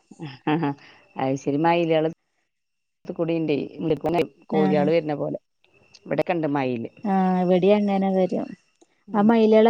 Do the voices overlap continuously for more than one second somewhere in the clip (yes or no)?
no